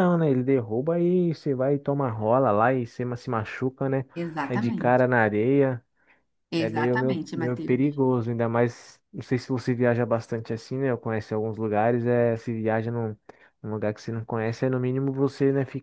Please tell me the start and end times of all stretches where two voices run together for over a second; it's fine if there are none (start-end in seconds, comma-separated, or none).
6.6-8.0